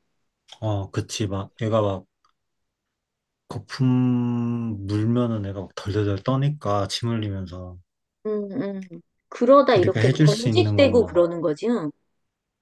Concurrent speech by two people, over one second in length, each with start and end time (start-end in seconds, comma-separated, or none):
9.8-11.1